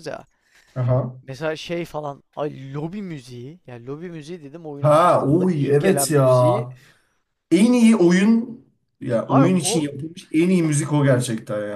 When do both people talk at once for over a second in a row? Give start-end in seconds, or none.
4.8-6.2